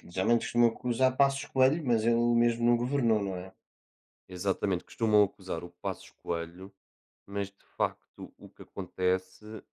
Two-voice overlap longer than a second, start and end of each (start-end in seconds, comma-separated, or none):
none